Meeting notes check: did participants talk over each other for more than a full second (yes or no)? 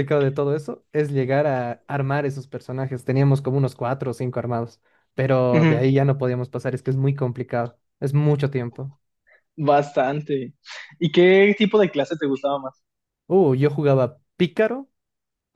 no